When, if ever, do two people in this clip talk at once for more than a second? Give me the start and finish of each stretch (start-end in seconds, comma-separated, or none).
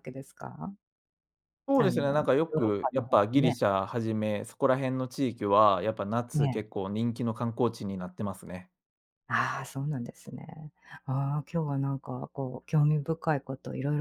1.8-3.6